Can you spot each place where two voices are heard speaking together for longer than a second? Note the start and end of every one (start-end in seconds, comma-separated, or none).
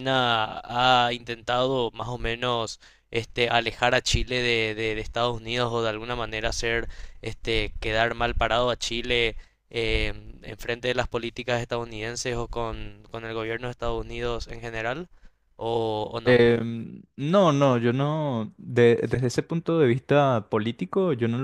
none